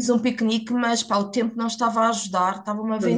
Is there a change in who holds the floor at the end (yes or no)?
no